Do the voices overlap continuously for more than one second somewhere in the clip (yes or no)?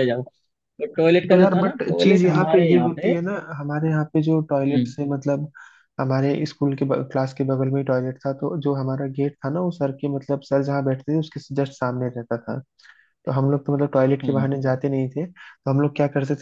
yes